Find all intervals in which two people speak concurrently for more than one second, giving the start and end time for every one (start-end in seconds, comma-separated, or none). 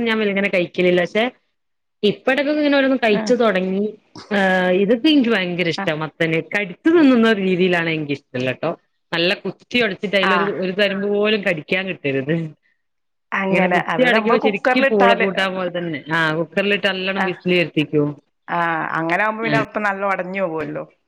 13.5-15.3